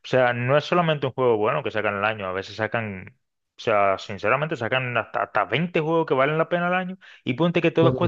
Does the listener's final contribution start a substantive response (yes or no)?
no